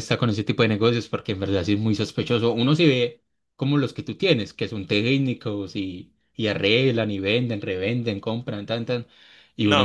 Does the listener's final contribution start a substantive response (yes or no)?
yes